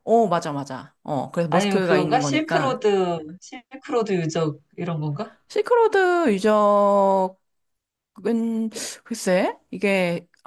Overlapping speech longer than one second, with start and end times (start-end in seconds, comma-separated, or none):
1.5-2.8